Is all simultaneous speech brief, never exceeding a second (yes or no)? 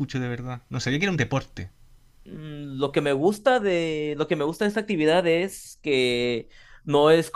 yes